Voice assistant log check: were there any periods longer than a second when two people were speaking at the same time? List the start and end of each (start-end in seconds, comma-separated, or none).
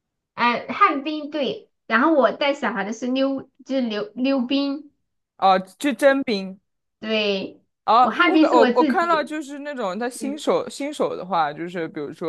8.0-9.3